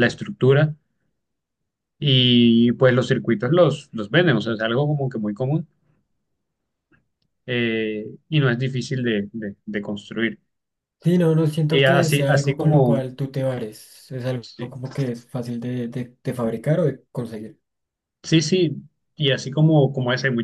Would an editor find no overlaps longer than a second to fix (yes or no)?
no